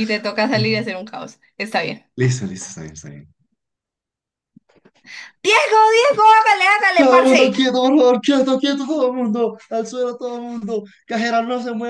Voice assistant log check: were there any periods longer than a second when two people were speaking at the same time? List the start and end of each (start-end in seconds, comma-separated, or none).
none